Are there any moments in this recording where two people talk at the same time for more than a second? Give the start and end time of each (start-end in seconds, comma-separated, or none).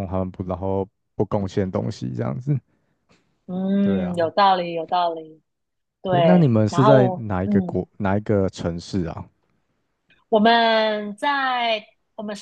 6.1-7.9